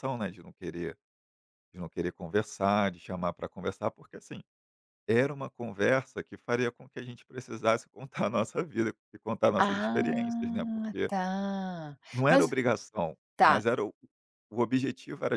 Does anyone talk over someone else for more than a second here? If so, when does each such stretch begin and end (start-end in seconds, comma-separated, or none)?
9.6-11.1